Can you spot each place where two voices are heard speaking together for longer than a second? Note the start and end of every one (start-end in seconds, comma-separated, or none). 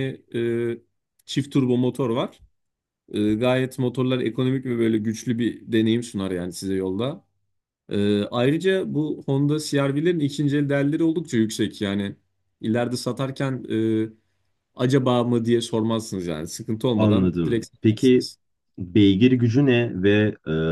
17.0-18.3